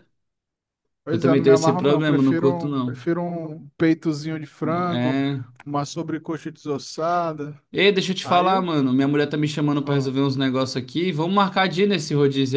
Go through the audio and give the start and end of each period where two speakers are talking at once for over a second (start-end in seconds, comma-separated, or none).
1.1-3.0